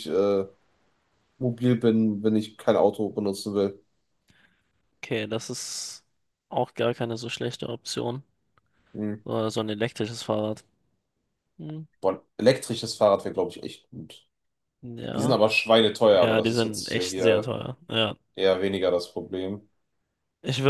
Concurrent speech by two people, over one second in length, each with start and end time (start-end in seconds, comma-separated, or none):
16.1-17.5